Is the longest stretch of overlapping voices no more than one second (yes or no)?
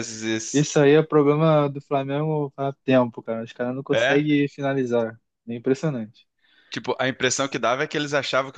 yes